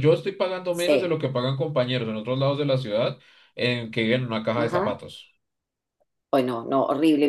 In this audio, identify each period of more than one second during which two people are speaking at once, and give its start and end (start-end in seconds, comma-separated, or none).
none